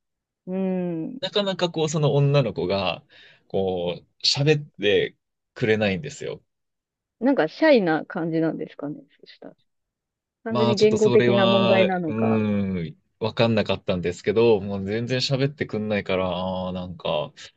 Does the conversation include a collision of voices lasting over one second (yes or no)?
yes